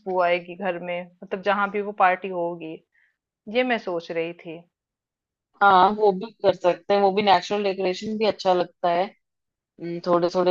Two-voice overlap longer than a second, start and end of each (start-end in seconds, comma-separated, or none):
none